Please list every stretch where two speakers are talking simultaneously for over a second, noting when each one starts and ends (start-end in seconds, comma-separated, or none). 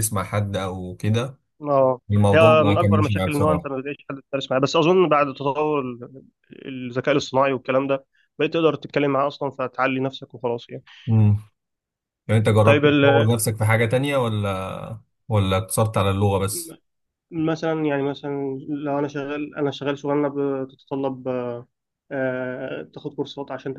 2.1-3.7